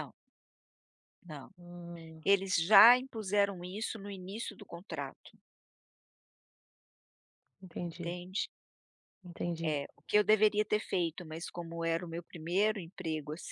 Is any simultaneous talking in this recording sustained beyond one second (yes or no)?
no